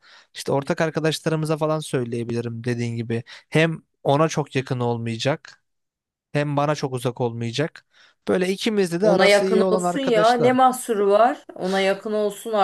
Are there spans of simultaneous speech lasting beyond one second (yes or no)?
yes